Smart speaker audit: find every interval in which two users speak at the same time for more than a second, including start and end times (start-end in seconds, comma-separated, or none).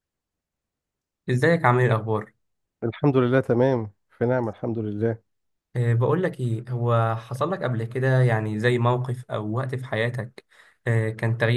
none